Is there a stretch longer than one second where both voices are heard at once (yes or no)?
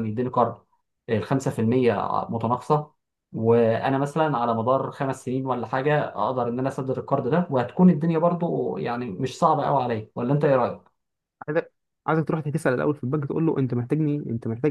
no